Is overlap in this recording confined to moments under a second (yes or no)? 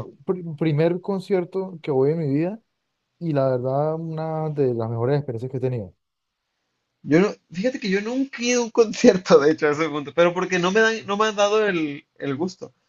yes